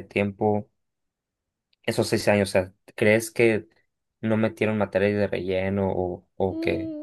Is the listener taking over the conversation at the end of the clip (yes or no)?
yes